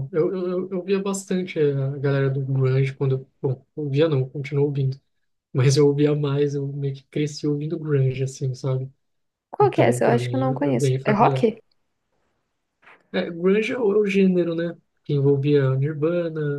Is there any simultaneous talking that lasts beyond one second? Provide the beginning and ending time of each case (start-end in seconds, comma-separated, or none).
9.6-11.5